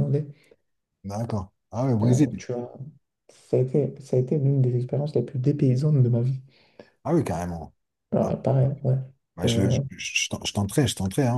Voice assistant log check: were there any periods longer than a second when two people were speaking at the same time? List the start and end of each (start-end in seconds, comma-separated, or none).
none